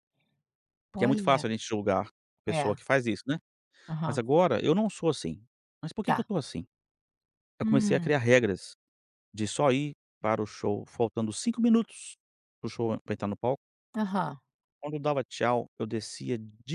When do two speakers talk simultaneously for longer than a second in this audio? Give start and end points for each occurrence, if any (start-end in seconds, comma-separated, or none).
none